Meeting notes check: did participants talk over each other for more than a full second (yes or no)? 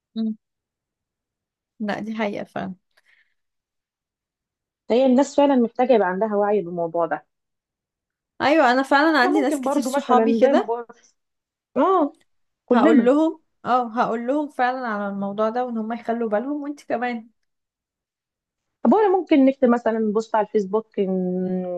yes